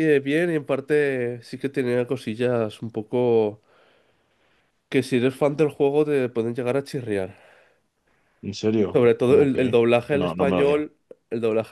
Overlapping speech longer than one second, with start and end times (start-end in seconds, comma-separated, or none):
8.9-10.8